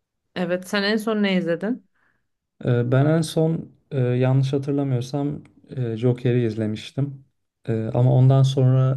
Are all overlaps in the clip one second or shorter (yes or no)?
yes